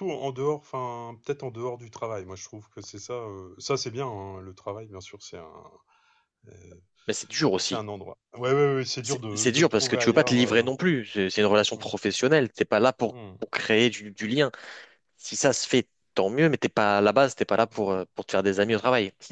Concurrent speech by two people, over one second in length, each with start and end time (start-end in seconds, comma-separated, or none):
9.0-10.6